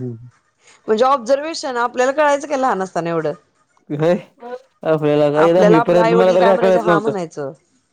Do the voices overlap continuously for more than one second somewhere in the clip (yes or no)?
yes